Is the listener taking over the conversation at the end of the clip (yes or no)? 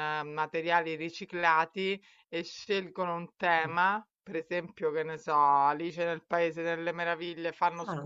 no